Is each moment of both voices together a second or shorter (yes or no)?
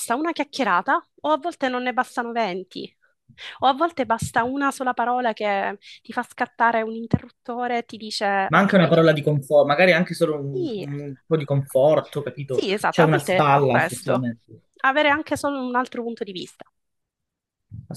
no